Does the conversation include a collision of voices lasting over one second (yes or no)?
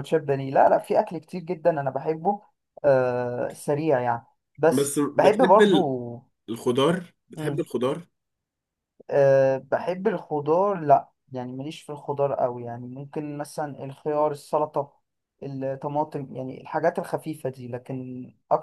yes